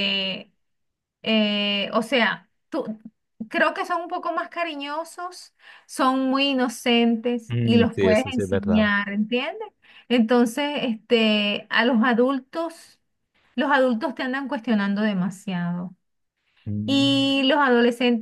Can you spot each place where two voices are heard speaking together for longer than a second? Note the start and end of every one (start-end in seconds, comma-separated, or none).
7.5-8.9